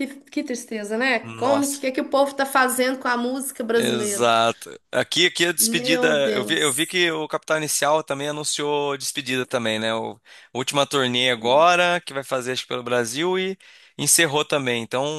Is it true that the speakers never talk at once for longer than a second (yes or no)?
no